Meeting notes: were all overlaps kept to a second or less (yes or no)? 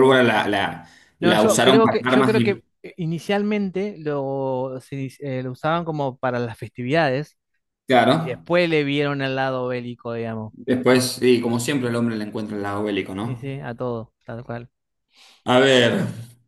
no